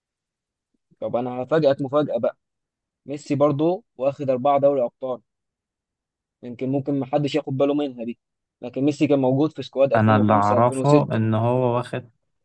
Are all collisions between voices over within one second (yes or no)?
no